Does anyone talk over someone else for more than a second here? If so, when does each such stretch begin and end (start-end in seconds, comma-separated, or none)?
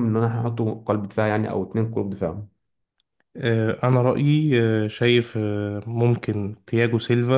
none